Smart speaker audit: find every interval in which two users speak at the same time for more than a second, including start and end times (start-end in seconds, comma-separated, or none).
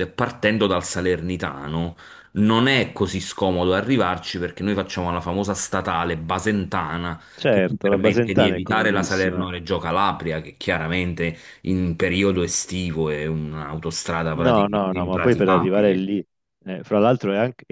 7.4-9.5, 14.3-16.1